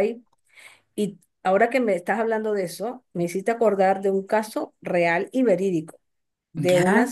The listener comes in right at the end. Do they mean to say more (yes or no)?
no